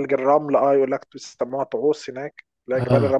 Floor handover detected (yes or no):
no